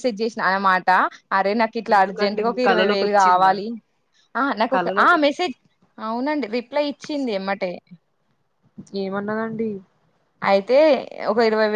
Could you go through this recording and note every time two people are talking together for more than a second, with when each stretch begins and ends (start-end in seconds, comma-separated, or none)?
1.9-3.5